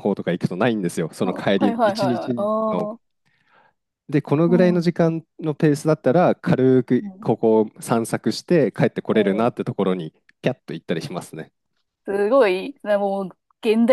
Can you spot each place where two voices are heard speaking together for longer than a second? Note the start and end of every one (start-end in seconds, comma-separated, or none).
1.2-2.9